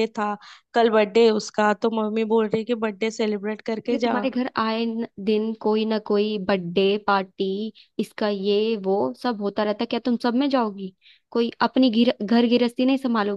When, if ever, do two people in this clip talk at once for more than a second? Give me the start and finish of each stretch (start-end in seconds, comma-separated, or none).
none